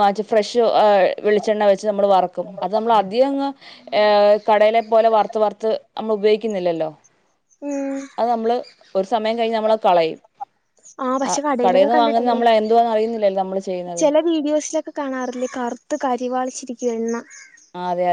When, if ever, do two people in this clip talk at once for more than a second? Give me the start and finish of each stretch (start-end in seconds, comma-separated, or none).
none